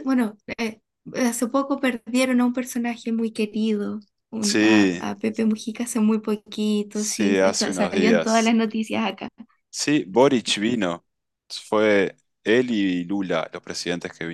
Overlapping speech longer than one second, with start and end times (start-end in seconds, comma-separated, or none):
6.9-8.6